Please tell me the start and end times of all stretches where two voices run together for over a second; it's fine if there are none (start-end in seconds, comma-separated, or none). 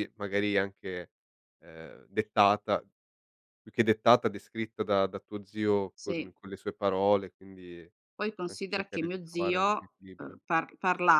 8.5-10.4